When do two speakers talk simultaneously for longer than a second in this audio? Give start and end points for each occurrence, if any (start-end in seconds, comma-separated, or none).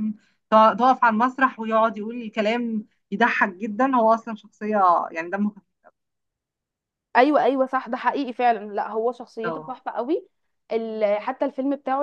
none